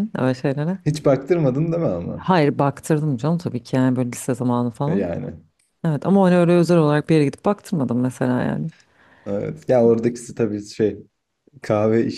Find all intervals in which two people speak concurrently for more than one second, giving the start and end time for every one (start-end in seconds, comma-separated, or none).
none